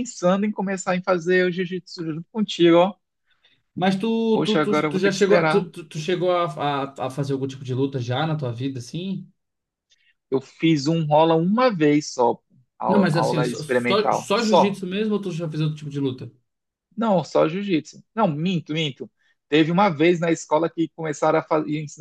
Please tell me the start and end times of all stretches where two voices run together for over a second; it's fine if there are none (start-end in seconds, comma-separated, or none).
4.4-5.7, 12.9-14.8